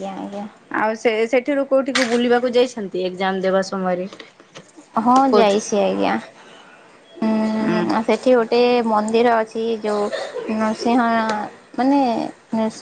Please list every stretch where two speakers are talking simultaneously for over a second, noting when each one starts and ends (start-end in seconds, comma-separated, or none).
none